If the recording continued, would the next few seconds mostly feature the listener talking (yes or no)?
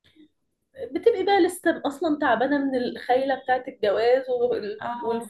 no